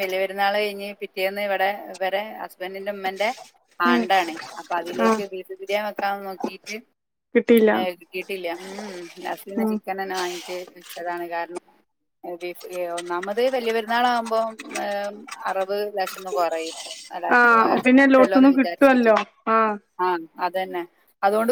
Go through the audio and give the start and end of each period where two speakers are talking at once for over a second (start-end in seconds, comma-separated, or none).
17.4-19.1